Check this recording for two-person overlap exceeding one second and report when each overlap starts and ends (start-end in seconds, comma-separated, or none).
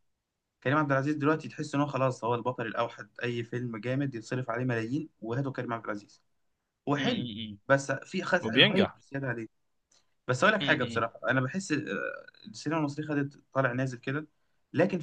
none